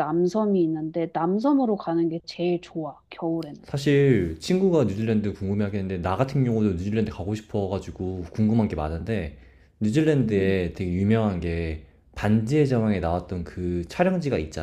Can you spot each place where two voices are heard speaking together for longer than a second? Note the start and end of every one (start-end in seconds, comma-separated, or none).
none